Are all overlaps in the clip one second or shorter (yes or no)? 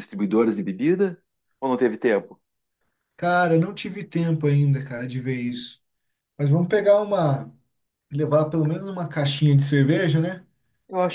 yes